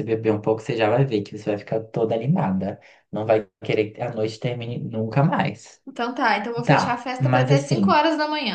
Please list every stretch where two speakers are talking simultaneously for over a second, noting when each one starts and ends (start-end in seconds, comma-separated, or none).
6.7-8.0